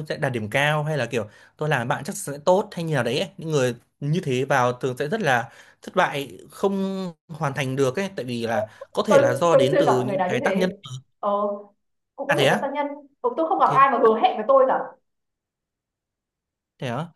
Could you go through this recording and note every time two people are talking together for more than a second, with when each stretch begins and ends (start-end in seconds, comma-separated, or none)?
9.1-10.7